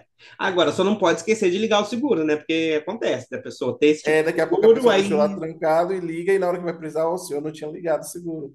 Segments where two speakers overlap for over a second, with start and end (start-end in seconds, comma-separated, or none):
4.0-5.4